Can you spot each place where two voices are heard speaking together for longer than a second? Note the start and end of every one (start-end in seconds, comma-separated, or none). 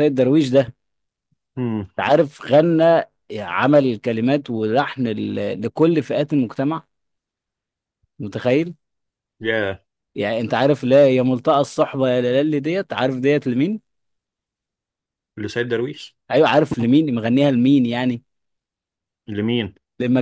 none